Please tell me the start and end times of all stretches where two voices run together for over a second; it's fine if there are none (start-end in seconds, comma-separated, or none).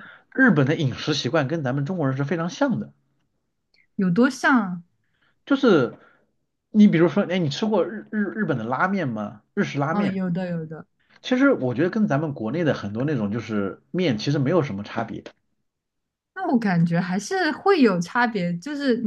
none